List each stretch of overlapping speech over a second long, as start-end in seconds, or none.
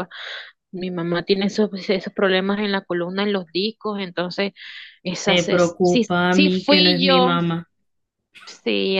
5.2-7.3